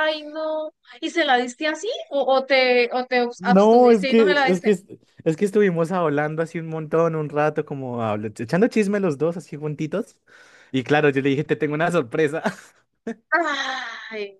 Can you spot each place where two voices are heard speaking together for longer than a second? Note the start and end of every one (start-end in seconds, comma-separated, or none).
3.4-4.7